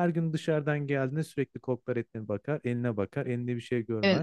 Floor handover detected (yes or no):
yes